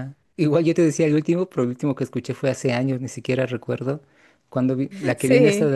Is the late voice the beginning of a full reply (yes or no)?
no